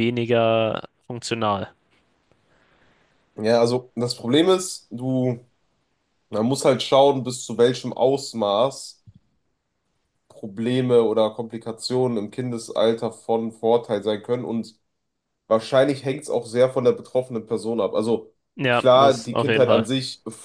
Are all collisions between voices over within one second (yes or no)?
no